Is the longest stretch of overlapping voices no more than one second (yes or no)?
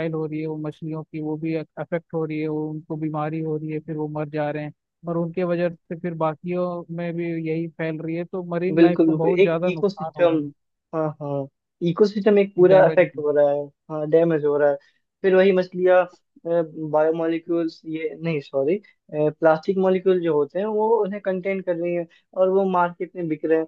no